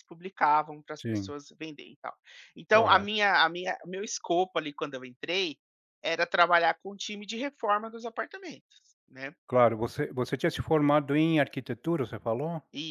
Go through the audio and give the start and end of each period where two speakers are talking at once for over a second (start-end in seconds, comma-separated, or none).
none